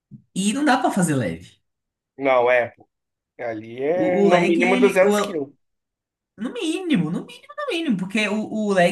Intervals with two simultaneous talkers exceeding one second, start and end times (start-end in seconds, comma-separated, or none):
3.9-5.4